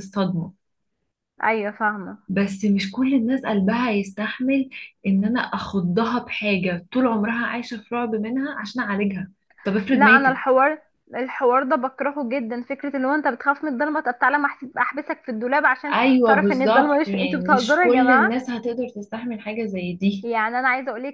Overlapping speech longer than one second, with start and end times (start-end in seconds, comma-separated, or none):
15.9-18.3